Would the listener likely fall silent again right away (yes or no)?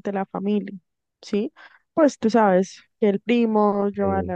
yes